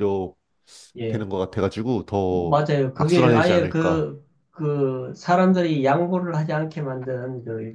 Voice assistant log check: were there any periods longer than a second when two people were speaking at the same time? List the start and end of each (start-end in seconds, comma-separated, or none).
2.3-4.1